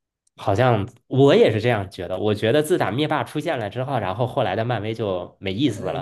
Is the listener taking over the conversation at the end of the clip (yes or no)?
yes